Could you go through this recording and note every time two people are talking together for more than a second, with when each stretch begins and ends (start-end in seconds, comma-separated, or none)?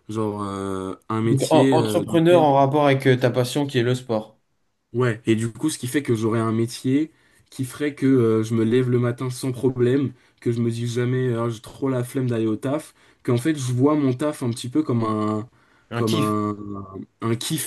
1.2-2.5